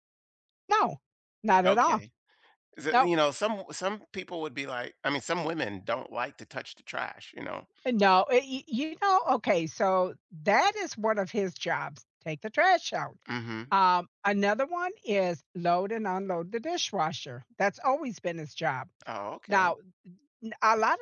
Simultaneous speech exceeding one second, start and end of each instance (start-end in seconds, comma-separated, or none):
none